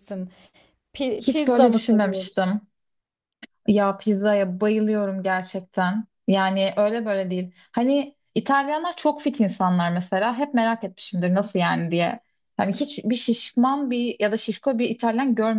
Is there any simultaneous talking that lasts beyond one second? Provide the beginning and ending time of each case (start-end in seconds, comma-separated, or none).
1.2-2.6